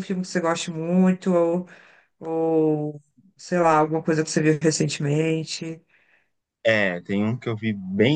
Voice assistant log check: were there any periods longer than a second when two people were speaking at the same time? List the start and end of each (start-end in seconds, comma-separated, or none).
none